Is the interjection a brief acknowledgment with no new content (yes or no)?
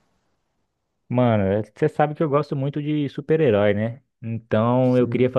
yes